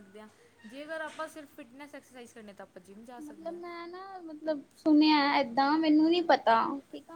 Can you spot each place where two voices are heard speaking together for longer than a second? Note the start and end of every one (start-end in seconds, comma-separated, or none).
none